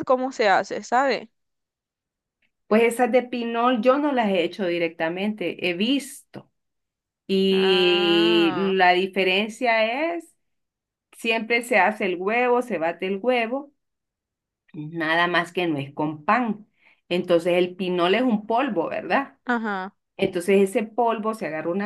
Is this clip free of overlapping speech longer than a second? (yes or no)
no